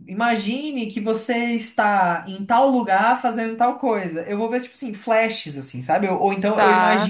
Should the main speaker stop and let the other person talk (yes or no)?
no